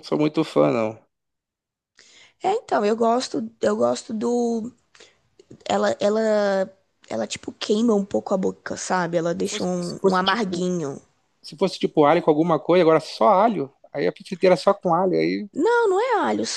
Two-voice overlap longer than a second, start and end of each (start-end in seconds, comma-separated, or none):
9.3-10.8